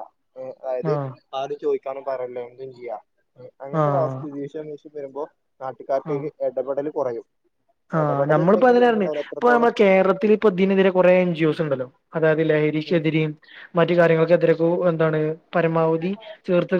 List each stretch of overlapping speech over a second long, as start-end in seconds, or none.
8.0-9.7